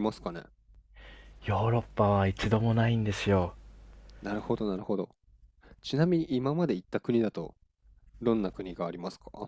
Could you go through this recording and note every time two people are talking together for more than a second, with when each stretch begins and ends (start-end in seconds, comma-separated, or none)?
none